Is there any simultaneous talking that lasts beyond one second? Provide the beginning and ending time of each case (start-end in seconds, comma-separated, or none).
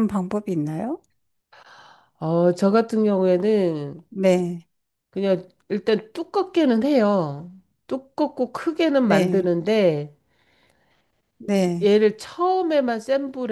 none